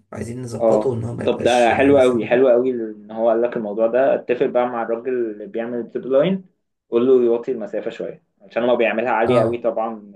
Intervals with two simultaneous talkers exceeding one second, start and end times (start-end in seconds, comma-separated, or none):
0.6-2.5